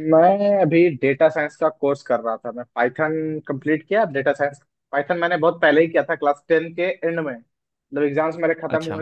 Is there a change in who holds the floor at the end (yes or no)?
no